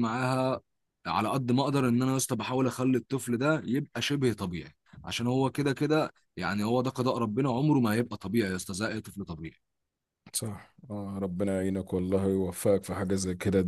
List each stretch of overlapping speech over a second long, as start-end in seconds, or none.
none